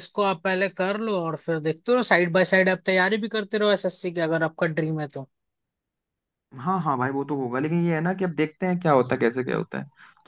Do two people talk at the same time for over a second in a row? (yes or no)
no